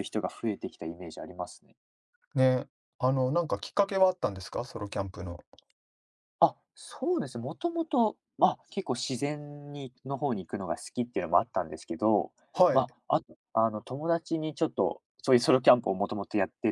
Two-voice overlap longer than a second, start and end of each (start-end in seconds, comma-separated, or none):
none